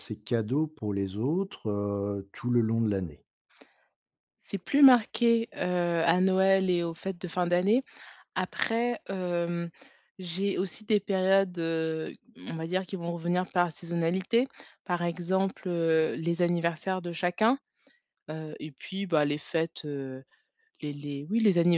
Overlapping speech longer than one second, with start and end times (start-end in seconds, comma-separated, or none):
none